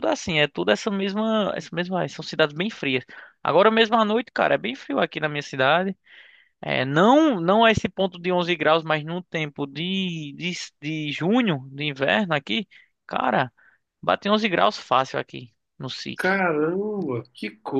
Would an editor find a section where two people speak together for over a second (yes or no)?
no